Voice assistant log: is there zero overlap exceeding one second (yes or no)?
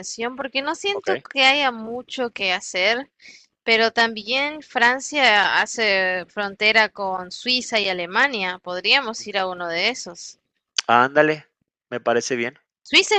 yes